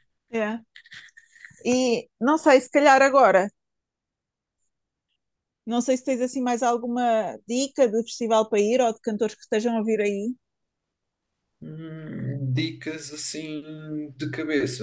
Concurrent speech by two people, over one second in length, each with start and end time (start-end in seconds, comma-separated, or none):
none